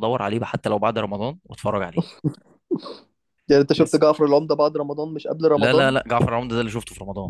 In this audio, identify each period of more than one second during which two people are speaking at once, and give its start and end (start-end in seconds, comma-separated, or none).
none